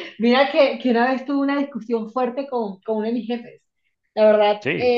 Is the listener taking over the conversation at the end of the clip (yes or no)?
no